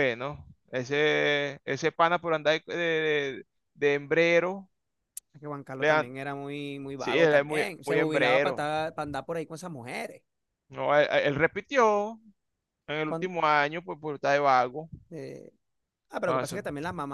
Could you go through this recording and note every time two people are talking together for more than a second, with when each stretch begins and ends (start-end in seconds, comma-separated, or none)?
7.0-8.7